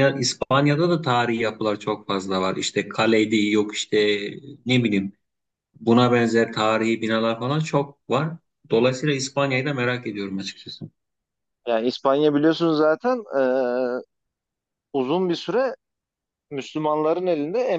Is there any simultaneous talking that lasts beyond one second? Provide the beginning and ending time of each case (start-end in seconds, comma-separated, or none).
none